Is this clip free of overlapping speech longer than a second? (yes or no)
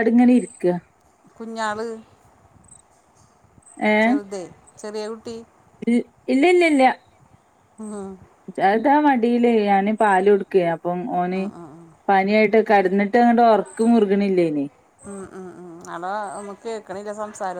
yes